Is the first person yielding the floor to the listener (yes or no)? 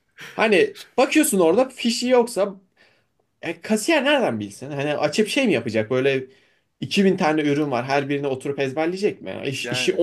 no